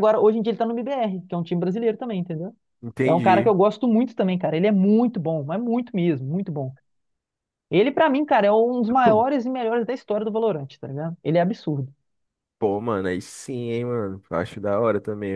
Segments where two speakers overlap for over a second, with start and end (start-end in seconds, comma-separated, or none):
none